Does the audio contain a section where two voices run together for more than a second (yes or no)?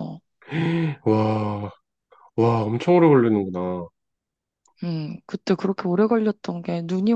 no